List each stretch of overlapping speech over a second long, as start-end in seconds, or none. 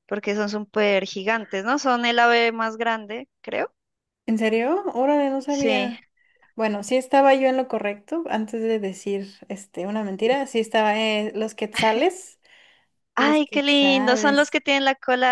13.2-14.6